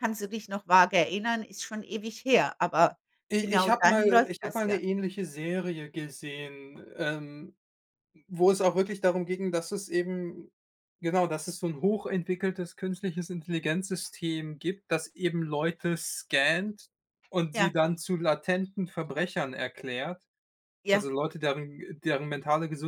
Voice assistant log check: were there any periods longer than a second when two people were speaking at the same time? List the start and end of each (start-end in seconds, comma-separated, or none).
3.4-4.8